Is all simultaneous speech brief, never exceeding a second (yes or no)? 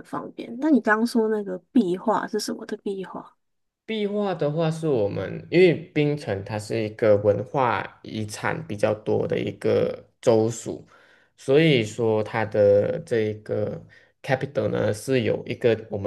yes